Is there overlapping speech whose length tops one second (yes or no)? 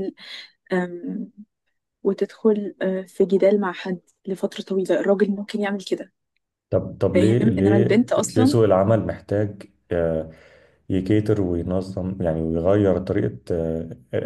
yes